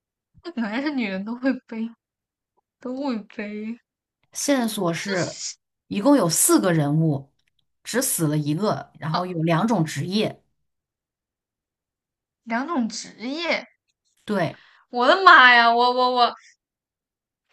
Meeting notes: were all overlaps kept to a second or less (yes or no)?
yes